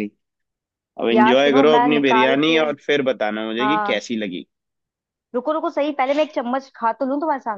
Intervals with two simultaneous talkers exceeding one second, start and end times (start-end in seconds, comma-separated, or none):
1.1-2.6